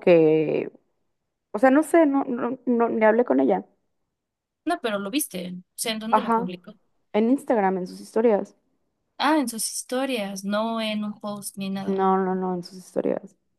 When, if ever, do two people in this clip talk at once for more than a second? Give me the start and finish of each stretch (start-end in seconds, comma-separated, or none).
none